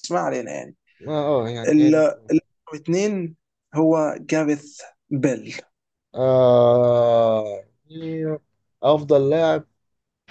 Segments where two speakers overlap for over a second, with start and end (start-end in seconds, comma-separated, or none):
none